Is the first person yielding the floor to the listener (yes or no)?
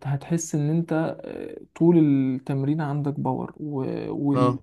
no